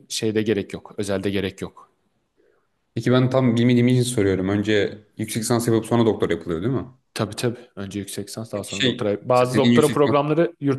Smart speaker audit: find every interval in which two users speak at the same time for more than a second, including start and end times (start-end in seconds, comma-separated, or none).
8.5-10.2